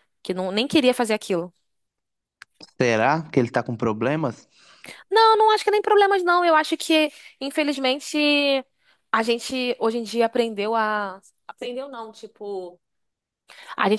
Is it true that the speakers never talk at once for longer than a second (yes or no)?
yes